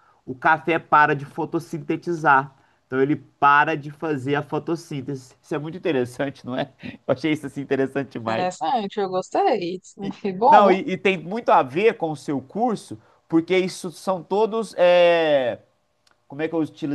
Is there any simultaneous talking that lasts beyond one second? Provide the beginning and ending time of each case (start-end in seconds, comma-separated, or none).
none